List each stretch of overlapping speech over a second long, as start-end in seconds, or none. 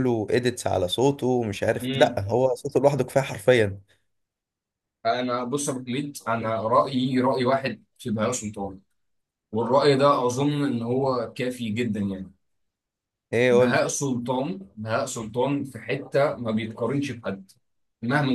none